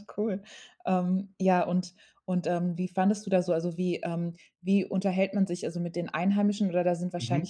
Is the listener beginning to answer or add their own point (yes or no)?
no